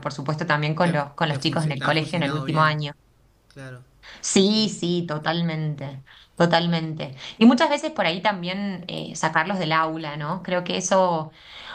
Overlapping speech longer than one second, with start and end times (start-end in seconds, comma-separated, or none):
0.8-2.8